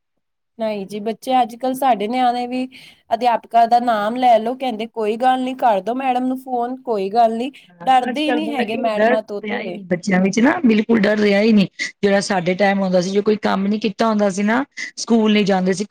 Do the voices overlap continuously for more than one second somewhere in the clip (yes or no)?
yes